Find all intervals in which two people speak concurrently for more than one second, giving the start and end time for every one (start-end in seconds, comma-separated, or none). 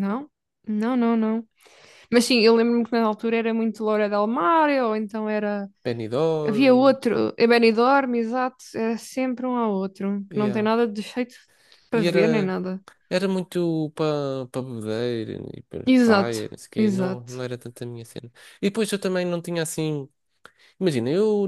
15.9-17.4